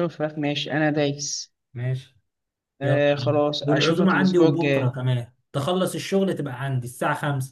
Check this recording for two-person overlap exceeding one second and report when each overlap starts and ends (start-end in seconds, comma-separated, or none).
2.8-4.9